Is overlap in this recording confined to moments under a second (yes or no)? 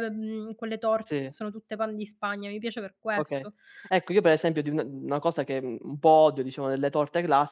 yes